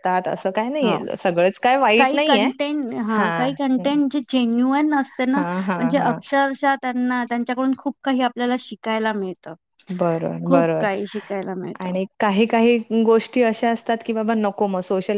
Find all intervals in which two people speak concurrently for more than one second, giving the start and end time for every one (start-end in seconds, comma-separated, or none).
none